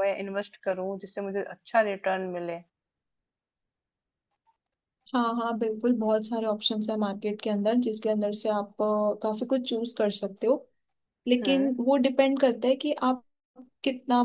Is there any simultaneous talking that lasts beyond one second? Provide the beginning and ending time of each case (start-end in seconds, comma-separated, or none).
none